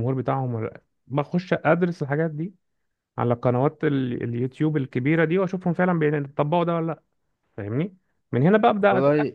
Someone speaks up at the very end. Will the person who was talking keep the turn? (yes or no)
yes